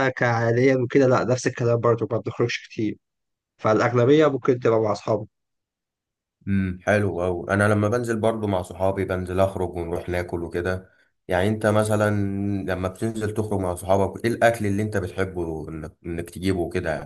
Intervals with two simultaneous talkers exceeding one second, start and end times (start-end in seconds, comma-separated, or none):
none